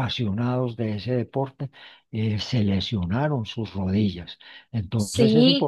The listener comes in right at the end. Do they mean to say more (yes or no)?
no